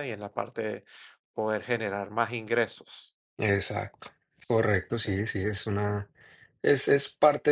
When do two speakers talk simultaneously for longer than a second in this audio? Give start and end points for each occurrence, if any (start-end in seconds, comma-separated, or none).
none